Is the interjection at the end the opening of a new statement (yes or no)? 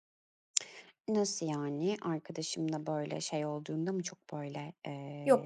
yes